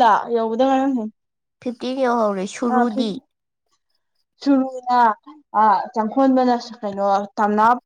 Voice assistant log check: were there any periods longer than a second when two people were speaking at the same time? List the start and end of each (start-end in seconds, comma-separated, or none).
none